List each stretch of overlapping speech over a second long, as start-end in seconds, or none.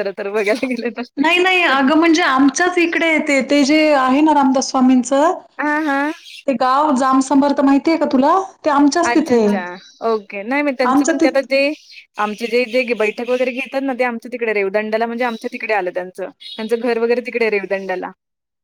none